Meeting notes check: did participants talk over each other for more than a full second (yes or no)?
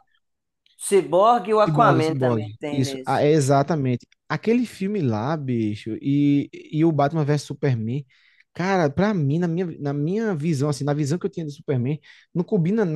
yes